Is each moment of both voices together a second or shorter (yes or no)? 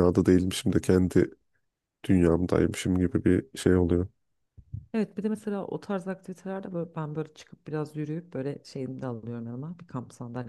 yes